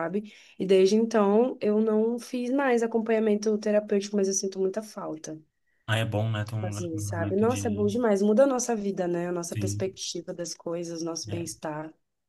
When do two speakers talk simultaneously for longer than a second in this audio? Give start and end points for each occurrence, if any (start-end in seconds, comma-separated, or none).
6.6-7.9